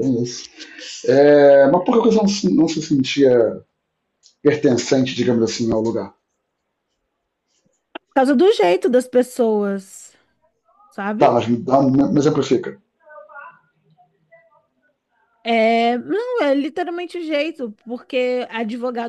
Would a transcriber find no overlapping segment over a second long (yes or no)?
yes